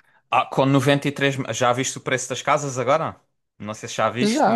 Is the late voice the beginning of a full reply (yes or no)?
yes